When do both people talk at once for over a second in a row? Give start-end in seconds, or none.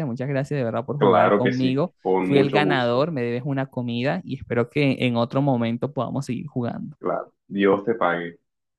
1.0-3.0